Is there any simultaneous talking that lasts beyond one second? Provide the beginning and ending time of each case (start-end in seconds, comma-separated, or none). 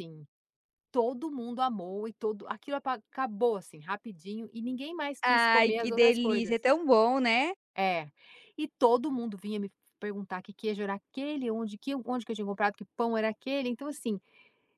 5.2-6.7